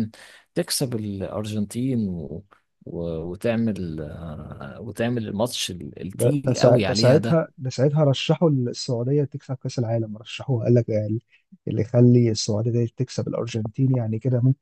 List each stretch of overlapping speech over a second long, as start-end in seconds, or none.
6.1-7.4